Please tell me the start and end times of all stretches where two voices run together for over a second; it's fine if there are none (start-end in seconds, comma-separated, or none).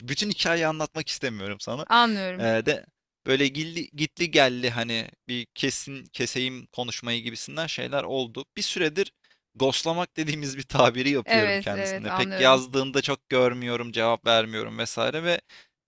11.2-12.6